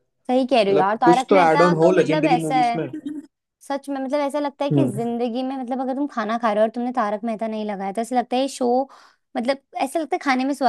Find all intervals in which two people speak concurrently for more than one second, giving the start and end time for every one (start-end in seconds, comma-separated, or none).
0.7-2.8